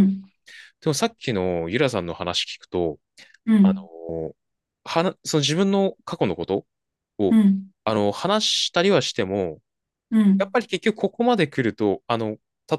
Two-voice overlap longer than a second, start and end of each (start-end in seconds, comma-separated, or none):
none